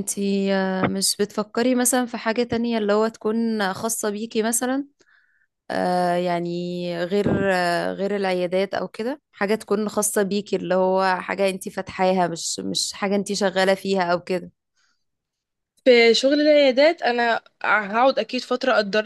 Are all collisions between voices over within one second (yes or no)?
yes